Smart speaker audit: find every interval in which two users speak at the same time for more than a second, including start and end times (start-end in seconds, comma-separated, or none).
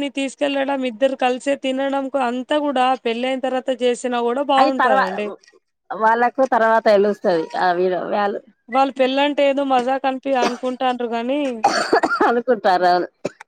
none